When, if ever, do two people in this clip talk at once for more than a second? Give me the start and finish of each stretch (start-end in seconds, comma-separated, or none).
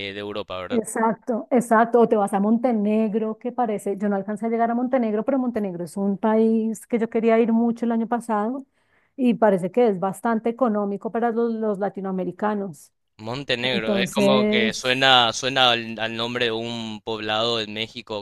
13.6-14.9